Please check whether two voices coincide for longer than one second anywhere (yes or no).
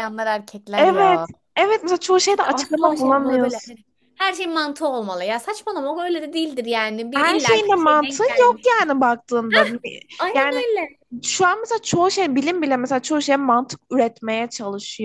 yes